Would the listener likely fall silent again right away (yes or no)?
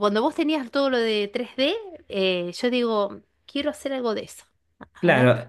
no